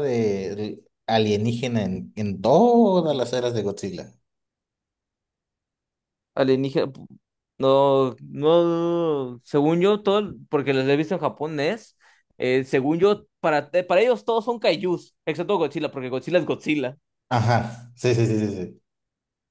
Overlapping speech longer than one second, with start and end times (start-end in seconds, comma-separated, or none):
none